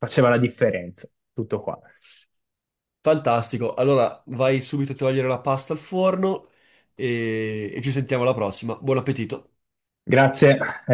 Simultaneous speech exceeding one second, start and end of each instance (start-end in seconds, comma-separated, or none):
none